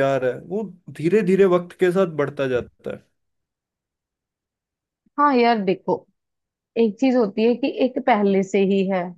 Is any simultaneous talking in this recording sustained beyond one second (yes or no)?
no